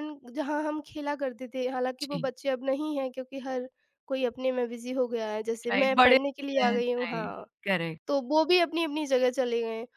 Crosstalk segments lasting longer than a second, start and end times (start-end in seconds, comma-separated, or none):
5.7-7.5